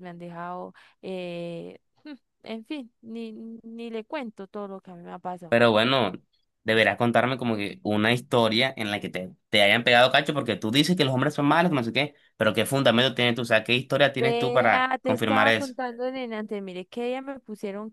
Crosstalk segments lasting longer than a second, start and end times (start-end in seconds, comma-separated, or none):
14.2-15.8